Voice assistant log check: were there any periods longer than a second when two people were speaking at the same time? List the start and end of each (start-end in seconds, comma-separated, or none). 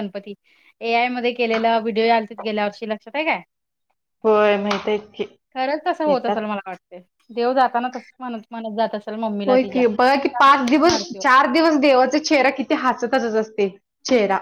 9.5-11.2